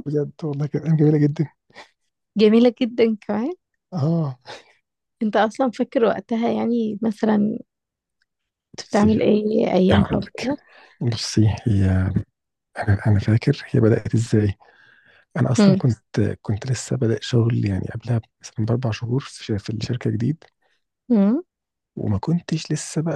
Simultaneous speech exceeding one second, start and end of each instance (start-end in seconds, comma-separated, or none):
none